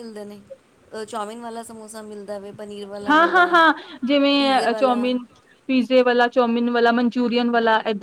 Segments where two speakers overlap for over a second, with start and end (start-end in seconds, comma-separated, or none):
none